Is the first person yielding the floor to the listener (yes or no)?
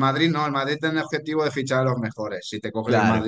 no